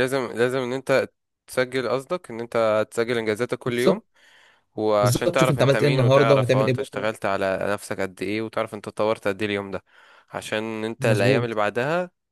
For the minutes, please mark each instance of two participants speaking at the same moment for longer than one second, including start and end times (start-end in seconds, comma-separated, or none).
5.0-7.1